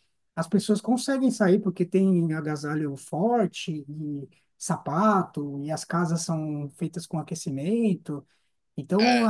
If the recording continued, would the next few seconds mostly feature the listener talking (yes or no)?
no